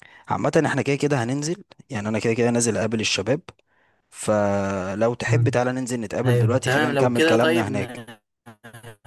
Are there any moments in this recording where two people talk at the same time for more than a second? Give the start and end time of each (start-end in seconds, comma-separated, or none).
6.2-8.1